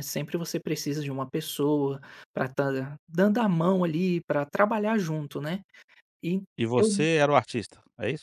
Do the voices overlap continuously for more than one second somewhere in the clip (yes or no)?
no